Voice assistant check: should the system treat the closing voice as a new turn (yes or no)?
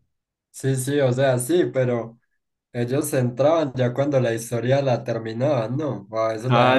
yes